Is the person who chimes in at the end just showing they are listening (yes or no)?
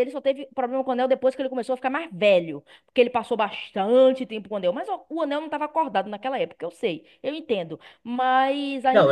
no